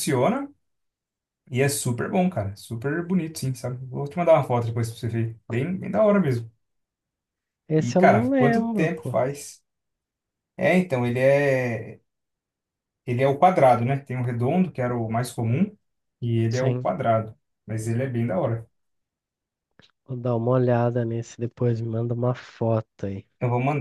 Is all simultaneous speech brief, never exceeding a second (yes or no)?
no